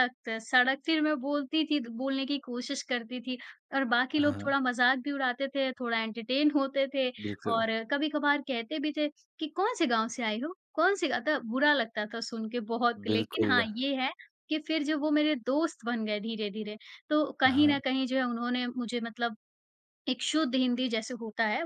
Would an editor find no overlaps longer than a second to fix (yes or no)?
yes